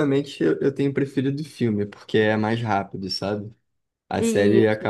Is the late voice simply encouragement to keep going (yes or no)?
yes